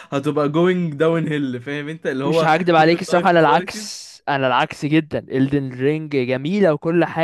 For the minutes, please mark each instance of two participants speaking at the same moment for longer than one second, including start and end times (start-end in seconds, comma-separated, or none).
2.2-4.0